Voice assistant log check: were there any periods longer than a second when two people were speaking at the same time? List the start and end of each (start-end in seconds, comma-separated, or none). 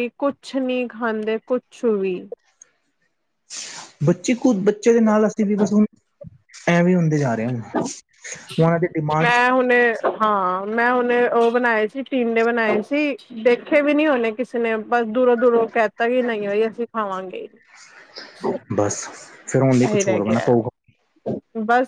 none